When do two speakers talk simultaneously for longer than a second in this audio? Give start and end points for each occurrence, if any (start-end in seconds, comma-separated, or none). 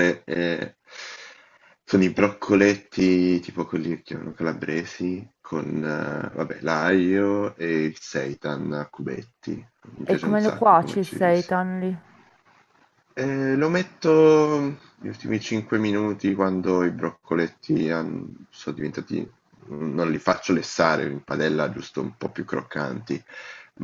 10.0-11.5